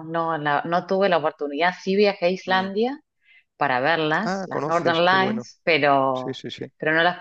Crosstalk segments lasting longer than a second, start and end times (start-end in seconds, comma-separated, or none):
4.2-5.5